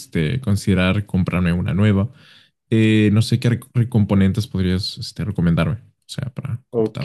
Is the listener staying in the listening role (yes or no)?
no